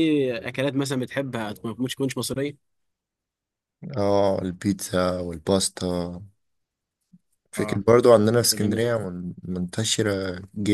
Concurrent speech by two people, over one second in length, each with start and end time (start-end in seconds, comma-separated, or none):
none